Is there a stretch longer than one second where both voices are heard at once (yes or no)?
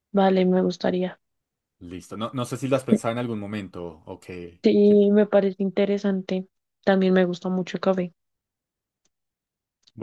no